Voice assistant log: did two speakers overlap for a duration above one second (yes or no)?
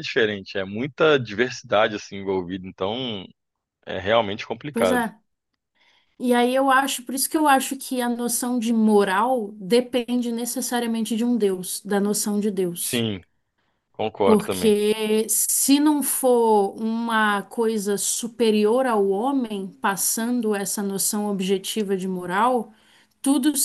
no